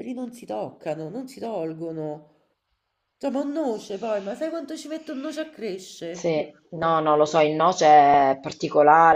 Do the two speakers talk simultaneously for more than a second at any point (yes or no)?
no